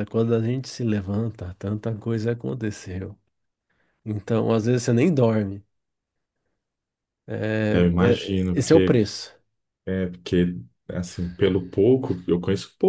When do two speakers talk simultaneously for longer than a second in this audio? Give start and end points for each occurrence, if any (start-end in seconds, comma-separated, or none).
7.7-9.0